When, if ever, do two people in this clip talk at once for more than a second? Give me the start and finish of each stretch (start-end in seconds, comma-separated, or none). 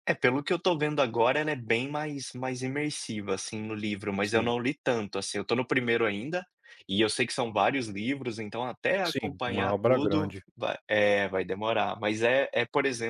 9.0-10.4